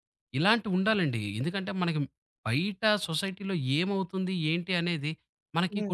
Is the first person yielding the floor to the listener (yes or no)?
no